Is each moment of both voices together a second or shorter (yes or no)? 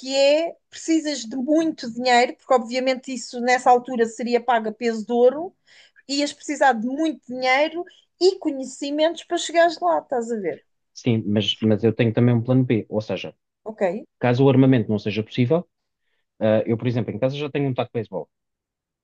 yes